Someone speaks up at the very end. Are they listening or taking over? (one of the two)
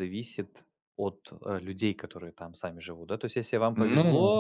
listening